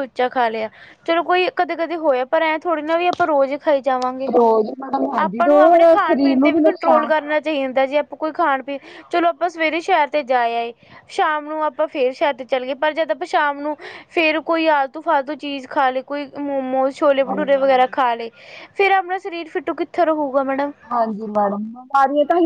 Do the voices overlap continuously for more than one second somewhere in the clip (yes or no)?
yes